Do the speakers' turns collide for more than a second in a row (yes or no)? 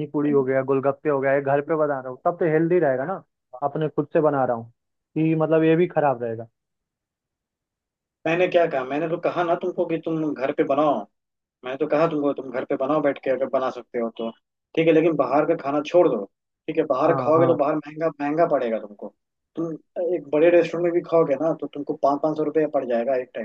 no